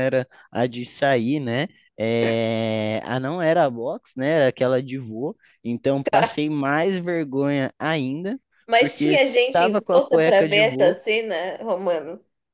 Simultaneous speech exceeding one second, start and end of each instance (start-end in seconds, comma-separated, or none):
8.8-11.0